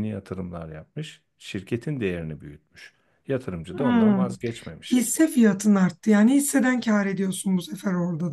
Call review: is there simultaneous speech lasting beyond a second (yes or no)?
no